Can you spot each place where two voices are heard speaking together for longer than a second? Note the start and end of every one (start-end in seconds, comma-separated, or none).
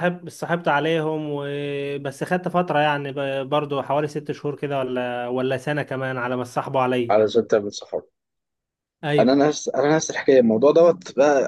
none